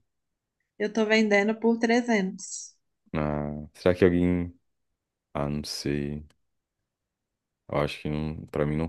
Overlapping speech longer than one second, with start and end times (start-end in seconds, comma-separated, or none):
none